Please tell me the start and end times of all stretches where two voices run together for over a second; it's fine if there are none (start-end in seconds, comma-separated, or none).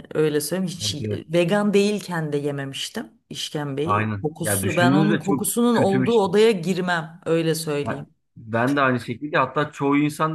3.8-6.3